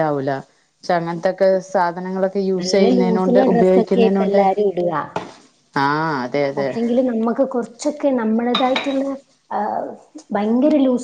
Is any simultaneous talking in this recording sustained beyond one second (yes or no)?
yes